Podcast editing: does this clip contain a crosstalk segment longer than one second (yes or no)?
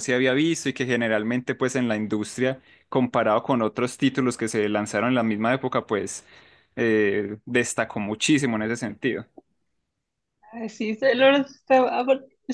no